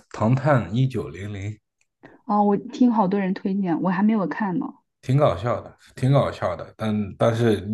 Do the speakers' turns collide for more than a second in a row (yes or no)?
no